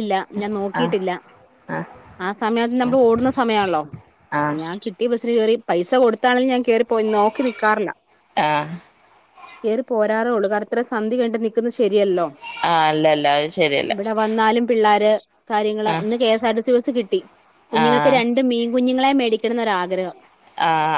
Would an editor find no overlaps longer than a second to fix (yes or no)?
yes